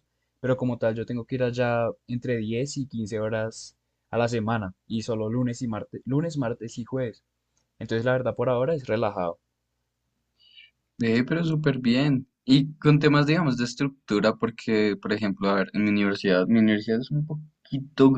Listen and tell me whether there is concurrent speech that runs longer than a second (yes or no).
no